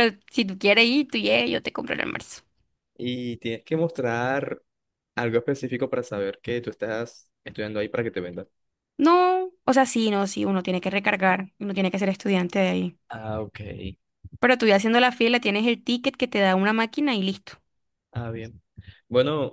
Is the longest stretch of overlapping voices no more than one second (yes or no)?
yes